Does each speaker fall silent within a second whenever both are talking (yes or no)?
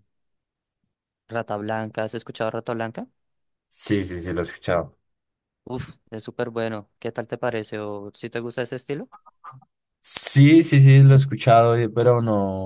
yes